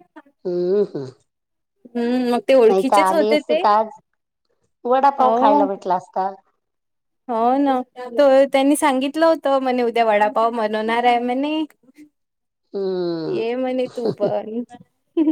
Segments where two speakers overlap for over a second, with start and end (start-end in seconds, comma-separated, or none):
none